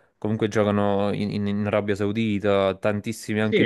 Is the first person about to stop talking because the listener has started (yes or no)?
yes